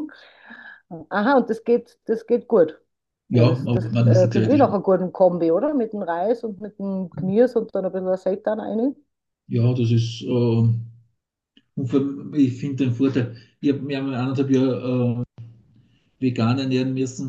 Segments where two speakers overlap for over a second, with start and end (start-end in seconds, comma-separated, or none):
3.3-4.8